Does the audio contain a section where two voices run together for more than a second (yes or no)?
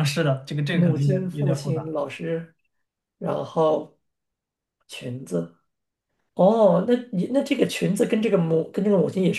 yes